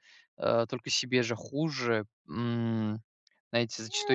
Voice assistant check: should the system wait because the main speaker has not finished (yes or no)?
no